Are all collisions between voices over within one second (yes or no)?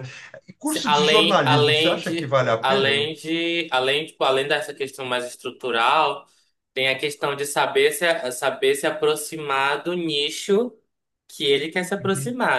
no